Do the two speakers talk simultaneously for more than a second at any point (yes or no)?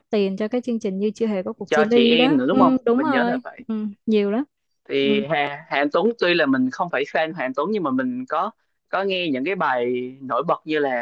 yes